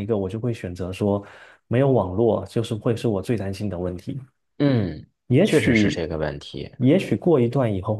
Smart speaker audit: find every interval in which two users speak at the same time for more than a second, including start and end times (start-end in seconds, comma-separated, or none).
none